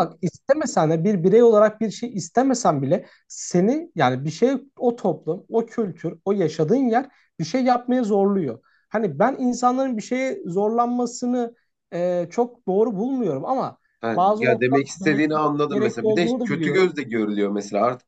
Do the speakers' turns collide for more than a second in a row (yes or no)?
yes